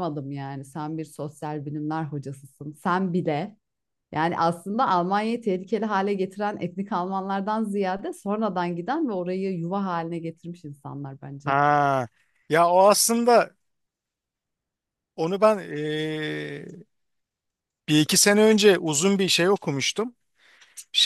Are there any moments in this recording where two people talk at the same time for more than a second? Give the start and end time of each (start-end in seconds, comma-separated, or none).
none